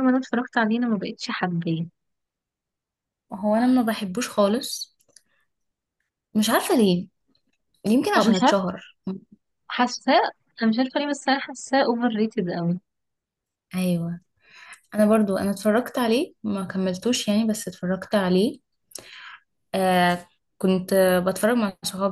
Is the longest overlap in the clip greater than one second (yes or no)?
no